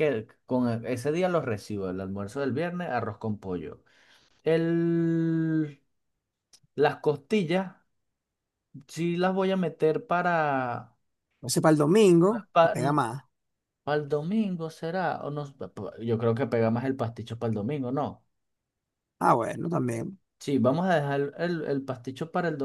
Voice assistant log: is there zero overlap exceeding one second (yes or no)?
yes